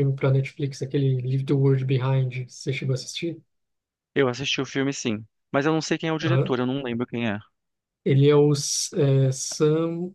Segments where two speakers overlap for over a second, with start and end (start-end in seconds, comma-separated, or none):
none